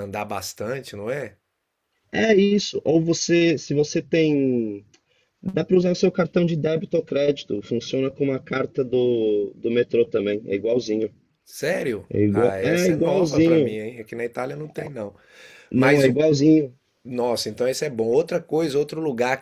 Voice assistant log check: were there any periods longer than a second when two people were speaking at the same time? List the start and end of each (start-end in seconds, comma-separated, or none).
12.1-13.8